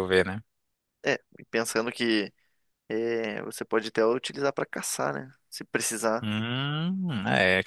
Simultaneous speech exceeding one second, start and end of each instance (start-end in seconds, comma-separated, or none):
none